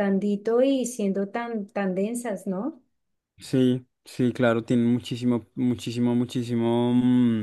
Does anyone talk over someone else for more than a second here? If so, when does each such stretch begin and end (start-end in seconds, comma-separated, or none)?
none